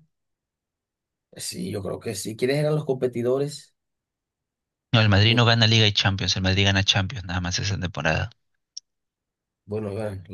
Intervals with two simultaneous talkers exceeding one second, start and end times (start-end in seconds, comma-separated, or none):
none